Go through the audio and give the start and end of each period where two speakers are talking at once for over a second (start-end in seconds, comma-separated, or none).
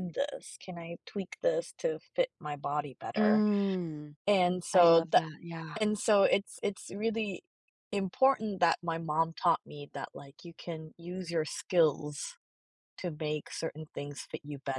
none